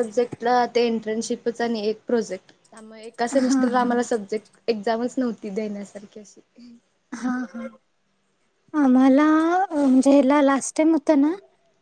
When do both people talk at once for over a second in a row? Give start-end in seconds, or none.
none